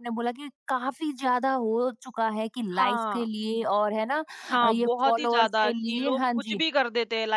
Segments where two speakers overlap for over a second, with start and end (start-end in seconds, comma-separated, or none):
4.6-6.6